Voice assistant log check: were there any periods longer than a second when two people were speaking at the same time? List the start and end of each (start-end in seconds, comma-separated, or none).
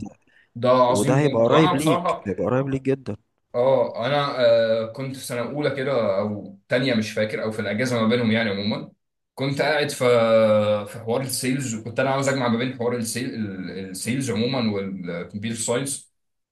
0.9-2.2